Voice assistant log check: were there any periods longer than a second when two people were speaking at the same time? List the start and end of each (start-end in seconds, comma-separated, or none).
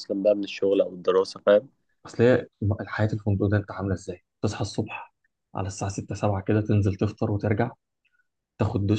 none